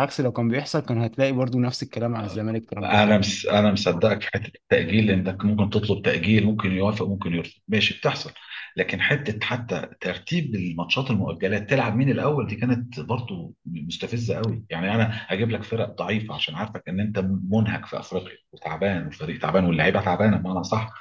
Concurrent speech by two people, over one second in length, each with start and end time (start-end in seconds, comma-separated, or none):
none